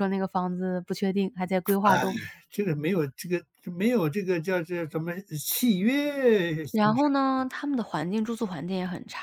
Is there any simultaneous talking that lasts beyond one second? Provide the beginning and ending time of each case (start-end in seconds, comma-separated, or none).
none